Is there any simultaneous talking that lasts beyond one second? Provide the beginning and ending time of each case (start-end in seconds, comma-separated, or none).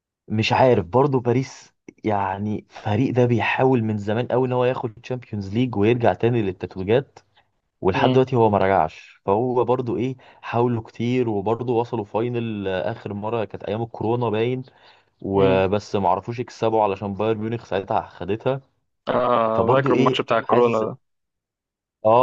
19.6-20.8